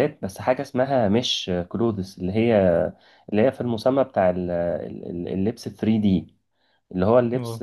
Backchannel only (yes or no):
yes